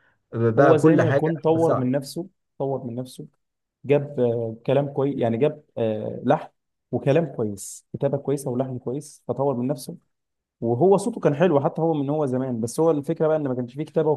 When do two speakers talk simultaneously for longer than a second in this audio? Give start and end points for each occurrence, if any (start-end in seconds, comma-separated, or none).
0.6-1.9